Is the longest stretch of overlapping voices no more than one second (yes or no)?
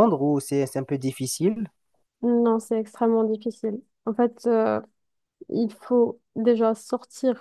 yes